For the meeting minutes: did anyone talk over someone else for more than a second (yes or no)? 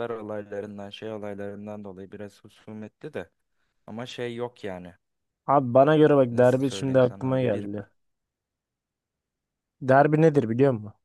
yes